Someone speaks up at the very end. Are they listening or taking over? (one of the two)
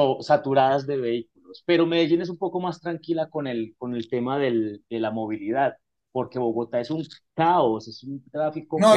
taking over